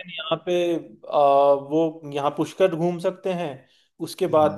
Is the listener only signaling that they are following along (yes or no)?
yes